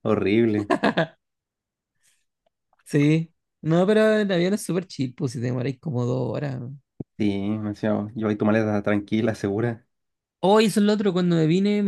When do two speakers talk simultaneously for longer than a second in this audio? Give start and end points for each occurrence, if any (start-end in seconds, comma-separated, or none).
none